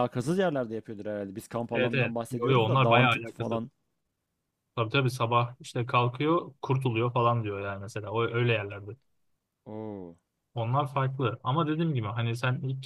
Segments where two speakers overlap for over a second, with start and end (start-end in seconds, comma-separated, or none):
1.7-3.6